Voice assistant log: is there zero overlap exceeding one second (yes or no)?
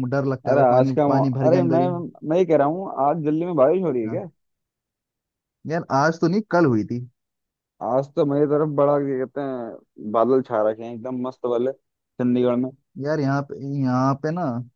no